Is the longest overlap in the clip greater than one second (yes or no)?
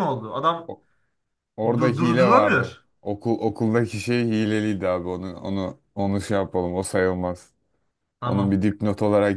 yes